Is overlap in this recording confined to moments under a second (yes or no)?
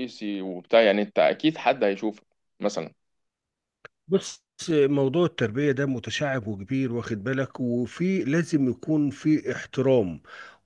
yes